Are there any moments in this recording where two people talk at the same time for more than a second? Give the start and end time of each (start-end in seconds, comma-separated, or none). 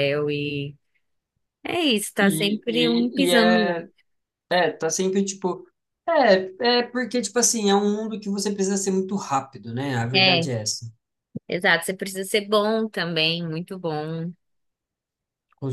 2.2-3.8